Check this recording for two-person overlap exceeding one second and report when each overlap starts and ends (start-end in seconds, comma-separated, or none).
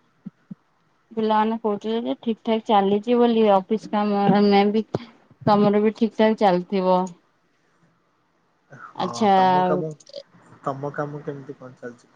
none